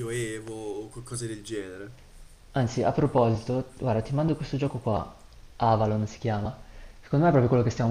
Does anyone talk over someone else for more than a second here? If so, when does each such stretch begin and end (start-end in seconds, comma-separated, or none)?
none